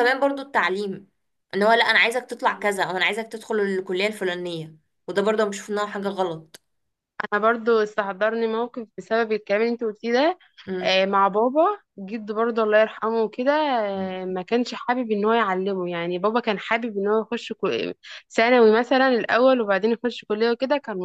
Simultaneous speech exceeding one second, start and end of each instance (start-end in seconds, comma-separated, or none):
none